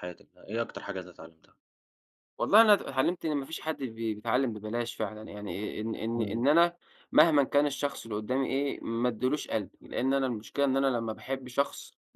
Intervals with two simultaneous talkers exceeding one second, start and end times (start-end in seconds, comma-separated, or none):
none